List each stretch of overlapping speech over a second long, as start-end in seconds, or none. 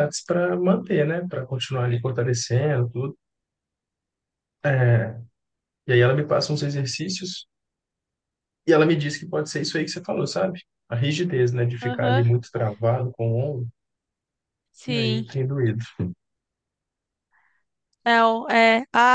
none